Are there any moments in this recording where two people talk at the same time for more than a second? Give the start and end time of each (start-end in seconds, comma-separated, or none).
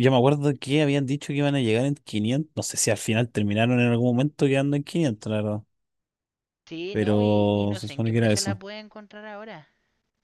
6.9-8.6